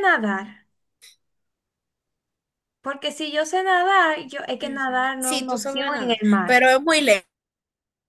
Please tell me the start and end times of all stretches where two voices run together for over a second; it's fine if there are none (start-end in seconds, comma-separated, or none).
4.6-6.6